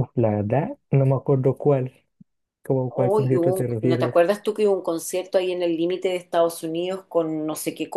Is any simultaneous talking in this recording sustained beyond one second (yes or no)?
yes